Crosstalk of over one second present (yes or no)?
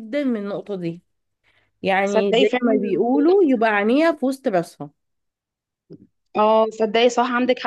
yes